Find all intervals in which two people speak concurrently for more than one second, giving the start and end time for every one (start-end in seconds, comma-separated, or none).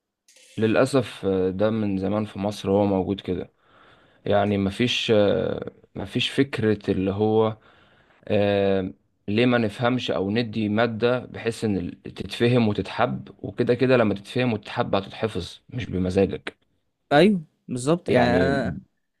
none